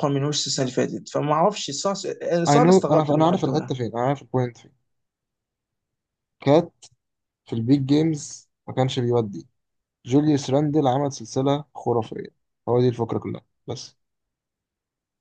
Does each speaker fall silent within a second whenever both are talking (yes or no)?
no